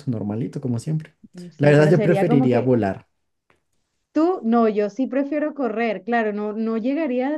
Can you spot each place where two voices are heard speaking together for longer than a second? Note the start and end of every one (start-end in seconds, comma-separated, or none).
1.6-2.8